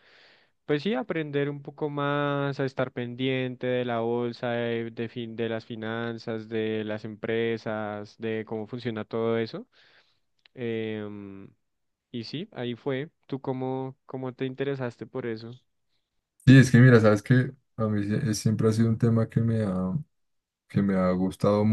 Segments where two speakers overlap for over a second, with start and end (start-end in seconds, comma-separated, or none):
none